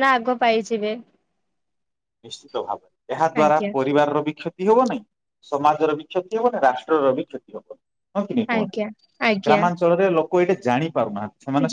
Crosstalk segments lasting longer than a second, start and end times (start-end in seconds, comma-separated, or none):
none